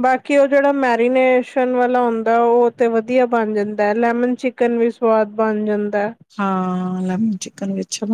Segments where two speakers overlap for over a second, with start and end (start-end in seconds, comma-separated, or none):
none